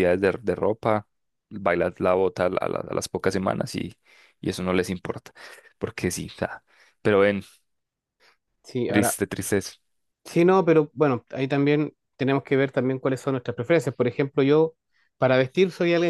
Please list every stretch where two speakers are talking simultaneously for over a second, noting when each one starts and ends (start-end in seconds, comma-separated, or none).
none